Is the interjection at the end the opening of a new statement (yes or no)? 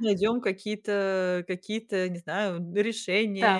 yes